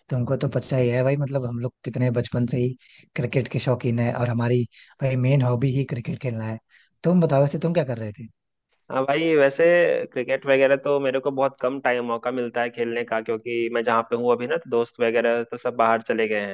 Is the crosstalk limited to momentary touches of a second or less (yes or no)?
yes